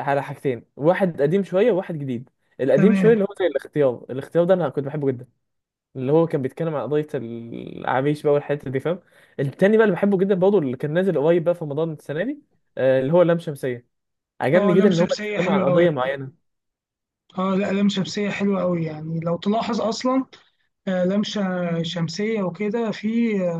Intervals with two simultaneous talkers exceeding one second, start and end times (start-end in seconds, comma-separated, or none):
14.6-15.9